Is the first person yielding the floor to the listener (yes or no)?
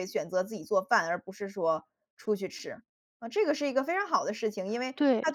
no